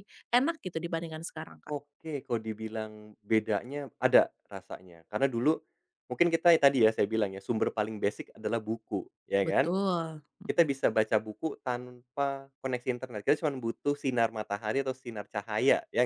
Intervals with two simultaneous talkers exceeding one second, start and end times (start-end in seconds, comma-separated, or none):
none